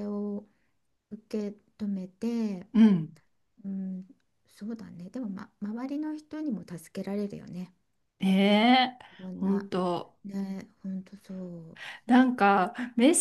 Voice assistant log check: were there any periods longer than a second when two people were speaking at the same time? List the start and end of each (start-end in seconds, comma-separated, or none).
none